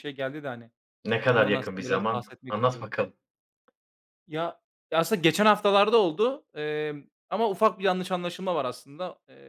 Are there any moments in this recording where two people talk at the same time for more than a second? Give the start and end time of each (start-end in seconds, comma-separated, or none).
1.3-2.9